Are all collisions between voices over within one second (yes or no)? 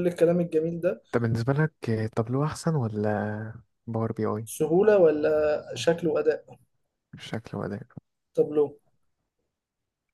yes